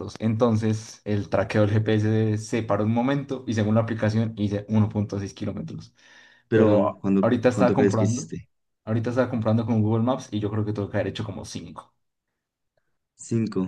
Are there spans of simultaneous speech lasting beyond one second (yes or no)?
yes